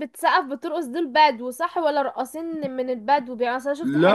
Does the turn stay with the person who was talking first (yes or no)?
yes